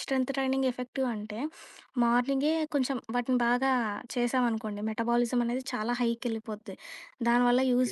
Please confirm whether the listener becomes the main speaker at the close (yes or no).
no